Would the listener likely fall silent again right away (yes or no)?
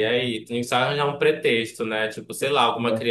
yes